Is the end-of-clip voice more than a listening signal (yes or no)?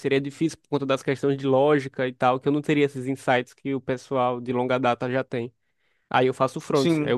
no